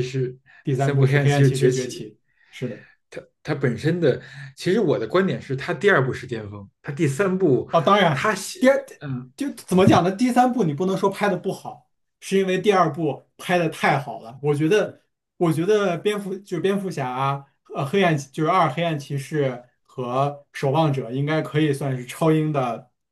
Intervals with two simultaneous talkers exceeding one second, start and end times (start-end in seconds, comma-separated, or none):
0.6-2.1